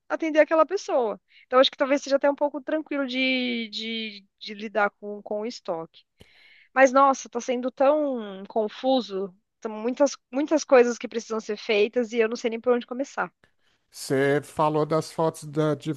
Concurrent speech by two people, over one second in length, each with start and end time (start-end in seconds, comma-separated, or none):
none